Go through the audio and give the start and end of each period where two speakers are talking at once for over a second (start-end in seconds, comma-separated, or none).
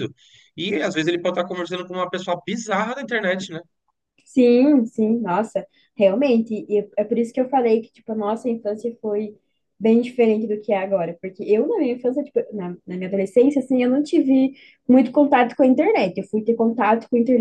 none